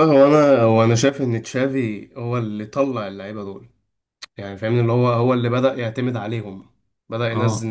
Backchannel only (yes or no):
yes